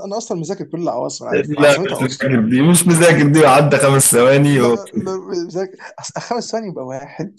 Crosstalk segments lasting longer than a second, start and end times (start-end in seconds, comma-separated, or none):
1.3-2.6